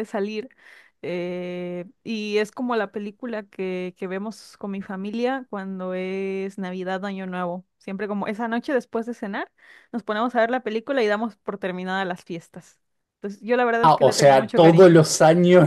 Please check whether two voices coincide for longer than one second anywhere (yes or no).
yes